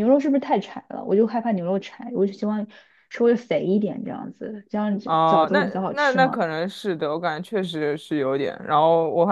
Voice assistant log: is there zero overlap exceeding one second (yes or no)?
no